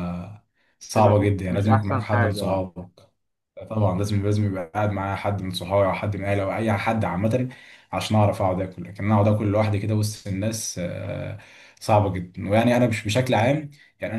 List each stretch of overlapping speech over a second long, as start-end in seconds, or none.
0.9-2.6